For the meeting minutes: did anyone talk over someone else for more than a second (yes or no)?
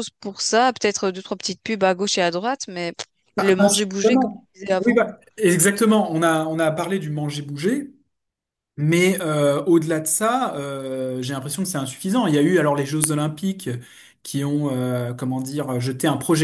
yes